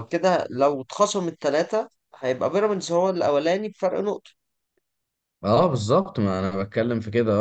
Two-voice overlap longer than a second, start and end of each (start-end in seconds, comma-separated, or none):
none